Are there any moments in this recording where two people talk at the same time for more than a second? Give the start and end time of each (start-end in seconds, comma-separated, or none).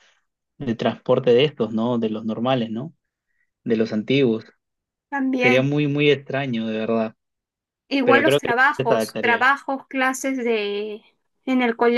8.0-9.5